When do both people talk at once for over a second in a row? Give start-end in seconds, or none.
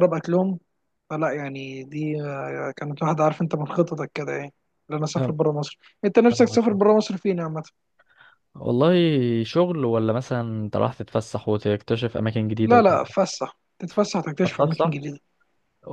none